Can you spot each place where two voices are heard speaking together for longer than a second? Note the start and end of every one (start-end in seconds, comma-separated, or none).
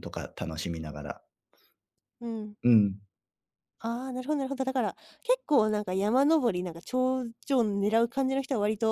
none